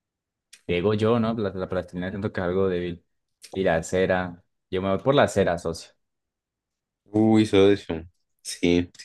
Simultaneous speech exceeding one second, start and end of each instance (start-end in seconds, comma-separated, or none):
none